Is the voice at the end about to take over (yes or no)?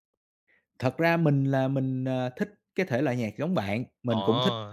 no